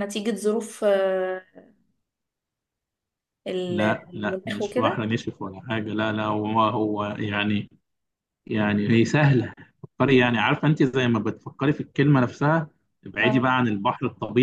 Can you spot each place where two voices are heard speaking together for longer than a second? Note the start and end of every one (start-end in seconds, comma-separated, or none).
3.7-5.1